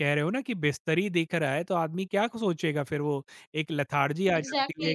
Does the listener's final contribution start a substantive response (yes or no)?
yes